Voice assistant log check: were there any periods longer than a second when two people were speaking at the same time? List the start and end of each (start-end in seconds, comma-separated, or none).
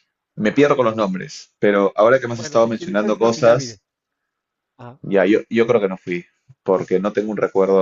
2.4-3.8